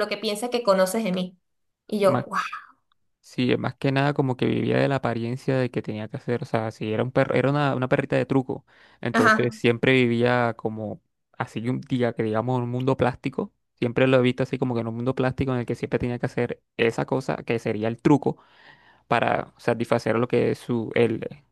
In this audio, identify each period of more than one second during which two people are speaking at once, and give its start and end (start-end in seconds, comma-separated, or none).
none